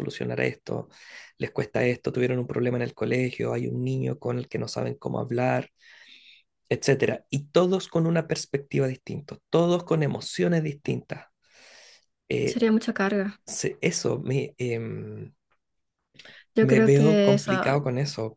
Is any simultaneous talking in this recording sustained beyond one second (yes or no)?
yes